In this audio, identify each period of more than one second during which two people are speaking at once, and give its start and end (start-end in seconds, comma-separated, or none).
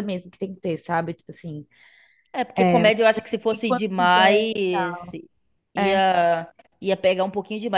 2.6-4.5